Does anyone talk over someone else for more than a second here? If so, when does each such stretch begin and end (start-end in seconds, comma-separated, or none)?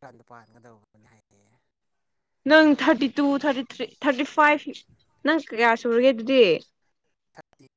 none